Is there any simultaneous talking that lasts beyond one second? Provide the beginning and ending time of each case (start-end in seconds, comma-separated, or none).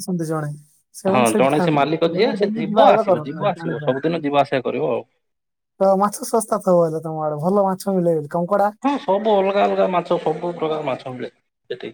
1.1-3.9